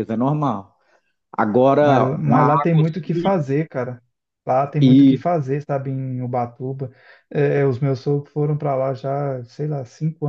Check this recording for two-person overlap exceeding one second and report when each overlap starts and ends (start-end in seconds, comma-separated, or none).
1.8-3.3